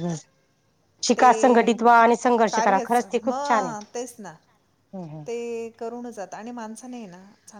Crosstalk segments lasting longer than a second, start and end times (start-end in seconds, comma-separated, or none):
2.5-4.3